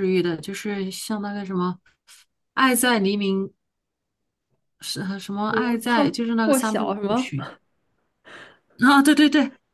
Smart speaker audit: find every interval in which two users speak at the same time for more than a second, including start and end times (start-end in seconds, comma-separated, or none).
5.5-7.3